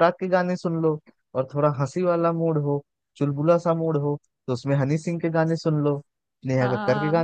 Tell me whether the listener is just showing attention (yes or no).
no